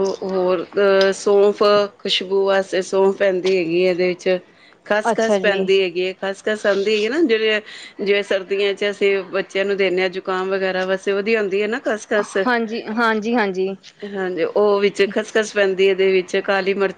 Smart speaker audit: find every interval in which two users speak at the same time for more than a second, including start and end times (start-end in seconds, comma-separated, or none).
none